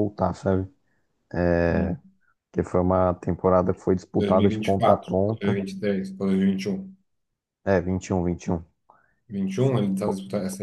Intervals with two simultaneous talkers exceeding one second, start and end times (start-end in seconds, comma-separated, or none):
4.2-5.6